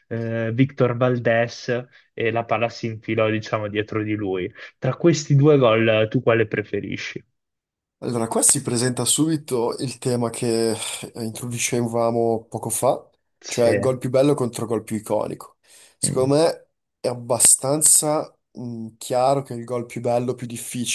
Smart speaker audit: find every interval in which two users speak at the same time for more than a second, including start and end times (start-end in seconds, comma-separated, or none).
none